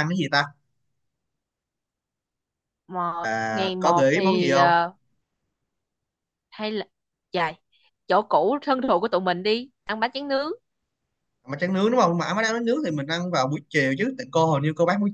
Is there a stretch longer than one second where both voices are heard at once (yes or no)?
yes